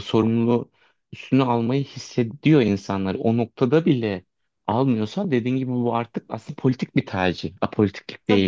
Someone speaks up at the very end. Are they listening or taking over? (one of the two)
taking over